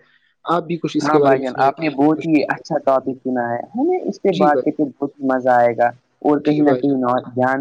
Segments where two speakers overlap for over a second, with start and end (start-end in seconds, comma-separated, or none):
1.0-3.1